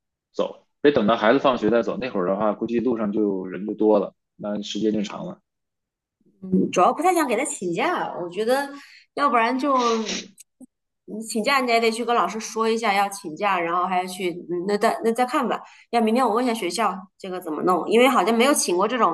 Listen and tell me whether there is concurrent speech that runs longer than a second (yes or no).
no